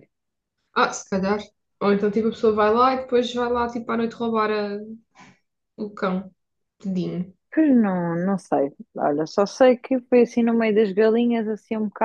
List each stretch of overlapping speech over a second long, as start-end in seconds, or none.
none